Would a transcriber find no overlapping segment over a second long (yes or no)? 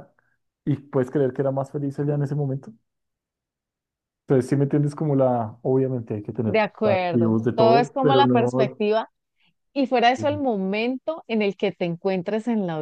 no